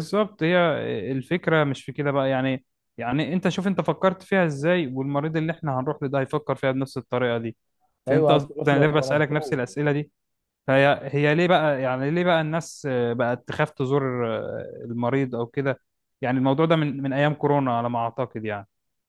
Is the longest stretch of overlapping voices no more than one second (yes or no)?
no